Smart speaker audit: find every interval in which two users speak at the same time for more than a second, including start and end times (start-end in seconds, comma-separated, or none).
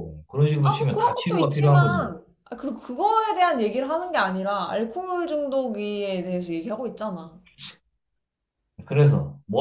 0.6-2.1